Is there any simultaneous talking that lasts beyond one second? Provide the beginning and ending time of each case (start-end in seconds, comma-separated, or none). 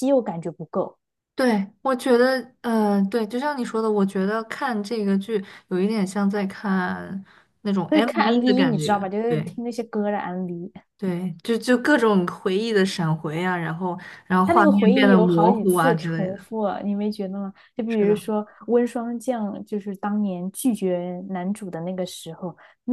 7.9-9.6, 14.4-16.4